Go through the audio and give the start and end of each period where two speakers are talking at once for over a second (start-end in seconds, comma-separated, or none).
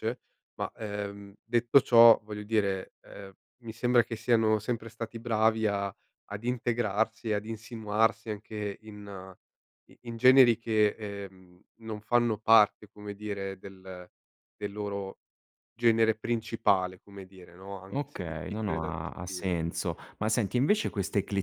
17.9-19.6